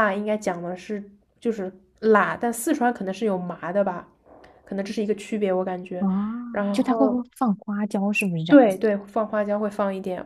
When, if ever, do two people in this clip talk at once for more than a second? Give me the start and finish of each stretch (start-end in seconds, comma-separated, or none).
none